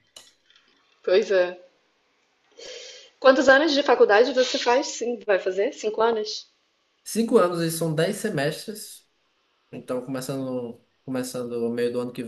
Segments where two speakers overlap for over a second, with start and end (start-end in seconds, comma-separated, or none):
none